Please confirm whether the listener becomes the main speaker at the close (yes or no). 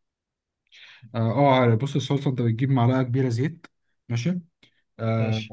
no